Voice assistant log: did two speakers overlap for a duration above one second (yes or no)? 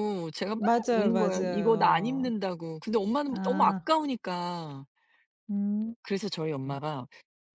yes